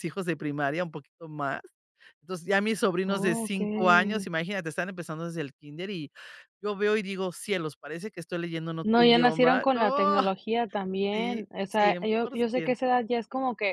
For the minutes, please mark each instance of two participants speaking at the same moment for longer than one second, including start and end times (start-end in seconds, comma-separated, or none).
3.1-4.3, 8.8-10.2, 11.1-12.8